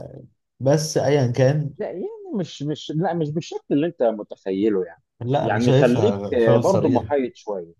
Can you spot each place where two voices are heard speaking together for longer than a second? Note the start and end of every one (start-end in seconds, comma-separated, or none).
5.4-7.1